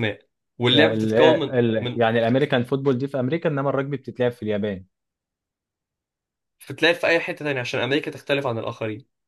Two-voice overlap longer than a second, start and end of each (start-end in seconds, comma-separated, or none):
0.7-2.0